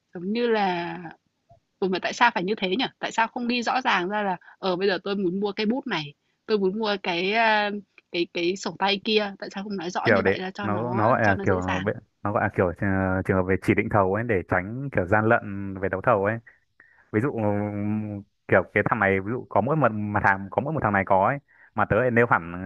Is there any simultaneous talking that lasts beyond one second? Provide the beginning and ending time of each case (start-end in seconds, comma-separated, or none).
10.0-11.5